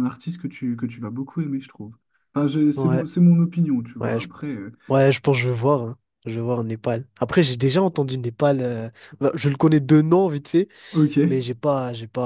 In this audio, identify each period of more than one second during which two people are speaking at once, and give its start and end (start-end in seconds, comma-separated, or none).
none